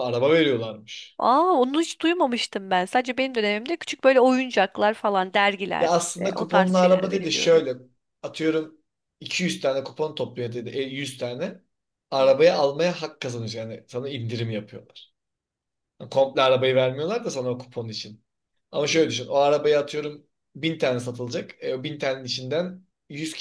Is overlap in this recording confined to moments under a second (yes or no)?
no